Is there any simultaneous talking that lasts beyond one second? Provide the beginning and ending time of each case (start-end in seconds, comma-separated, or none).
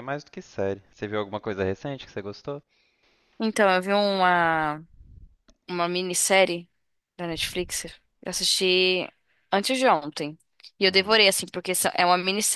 none